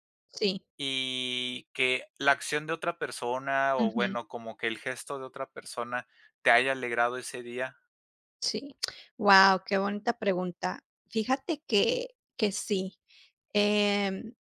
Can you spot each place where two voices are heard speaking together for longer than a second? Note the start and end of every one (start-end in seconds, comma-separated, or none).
none